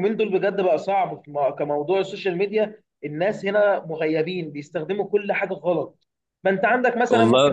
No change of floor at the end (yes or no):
yes